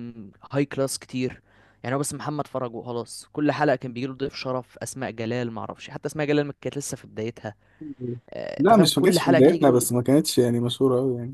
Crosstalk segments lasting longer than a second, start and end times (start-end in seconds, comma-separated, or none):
8.6-9.9